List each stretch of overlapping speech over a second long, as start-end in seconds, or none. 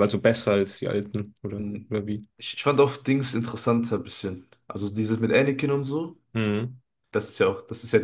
none